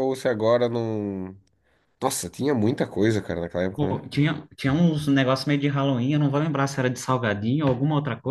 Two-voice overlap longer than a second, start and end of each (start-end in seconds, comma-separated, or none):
none